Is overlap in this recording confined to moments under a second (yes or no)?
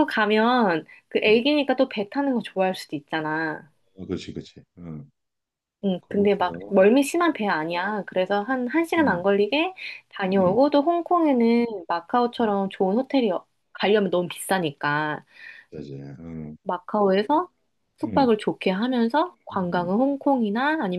yes